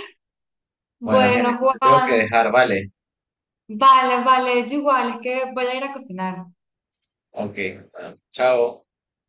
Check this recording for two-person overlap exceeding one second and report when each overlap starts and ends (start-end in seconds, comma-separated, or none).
1.0-2.3